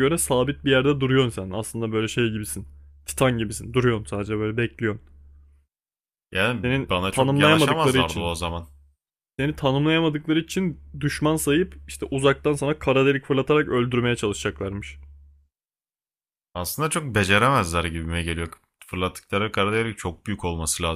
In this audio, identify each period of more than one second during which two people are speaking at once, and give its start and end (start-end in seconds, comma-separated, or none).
6.6-8.3